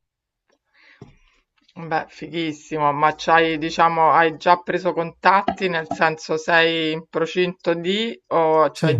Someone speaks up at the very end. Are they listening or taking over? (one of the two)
listening